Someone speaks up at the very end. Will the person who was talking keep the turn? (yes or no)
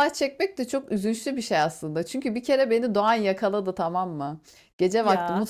yes